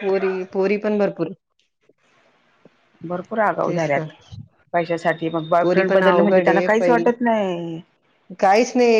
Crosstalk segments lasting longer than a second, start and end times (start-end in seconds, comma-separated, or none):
5.6-7.0